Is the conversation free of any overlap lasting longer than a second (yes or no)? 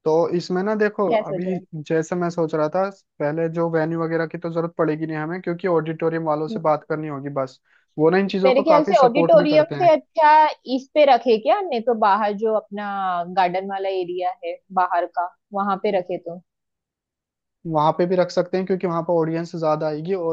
no